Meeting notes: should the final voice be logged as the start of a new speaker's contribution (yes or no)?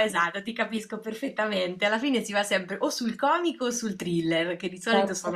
no